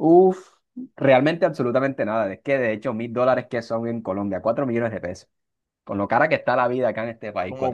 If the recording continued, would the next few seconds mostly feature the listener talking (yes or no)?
yes